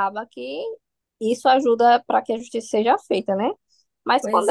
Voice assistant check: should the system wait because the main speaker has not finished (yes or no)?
yes